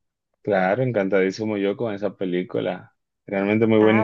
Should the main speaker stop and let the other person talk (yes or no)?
yes